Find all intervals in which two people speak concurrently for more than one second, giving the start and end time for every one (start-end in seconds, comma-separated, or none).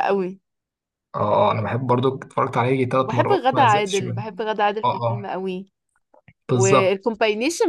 3.0-4.2